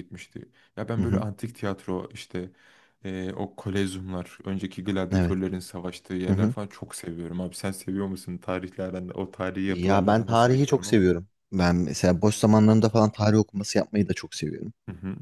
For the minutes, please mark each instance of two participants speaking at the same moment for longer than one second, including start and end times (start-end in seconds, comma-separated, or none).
9.7-11.1